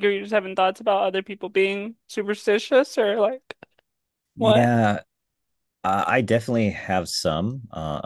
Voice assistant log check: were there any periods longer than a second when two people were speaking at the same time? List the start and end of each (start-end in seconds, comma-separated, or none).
none